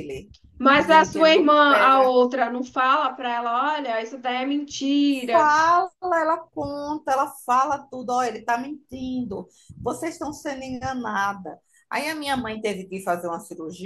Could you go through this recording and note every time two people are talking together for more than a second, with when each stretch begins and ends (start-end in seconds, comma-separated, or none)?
0.7-2.2